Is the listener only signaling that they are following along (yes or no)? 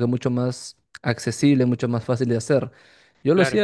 yes